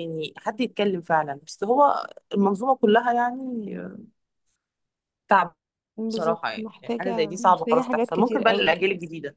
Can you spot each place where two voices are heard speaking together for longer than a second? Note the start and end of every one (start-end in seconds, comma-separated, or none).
6.1-8.8